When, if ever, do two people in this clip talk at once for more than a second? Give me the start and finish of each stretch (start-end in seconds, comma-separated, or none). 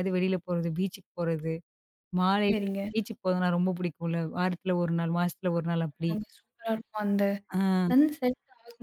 none